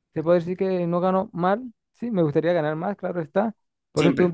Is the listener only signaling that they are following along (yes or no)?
yes